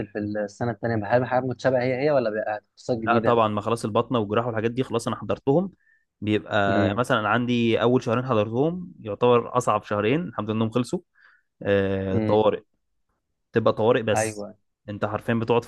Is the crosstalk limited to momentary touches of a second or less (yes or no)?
yes